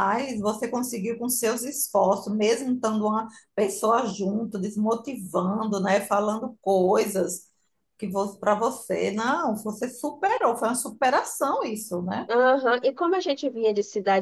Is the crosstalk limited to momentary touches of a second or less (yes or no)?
yes